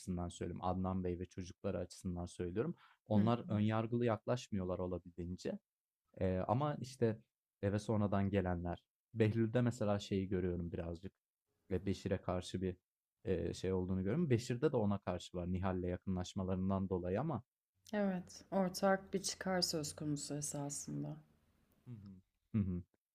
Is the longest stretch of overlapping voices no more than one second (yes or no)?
yes